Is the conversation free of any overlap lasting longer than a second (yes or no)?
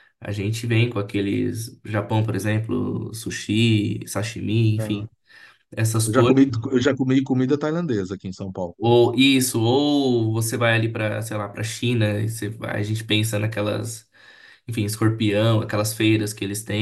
yes